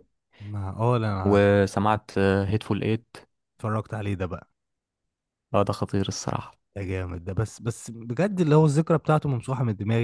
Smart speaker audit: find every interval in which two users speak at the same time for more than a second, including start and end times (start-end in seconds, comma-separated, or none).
none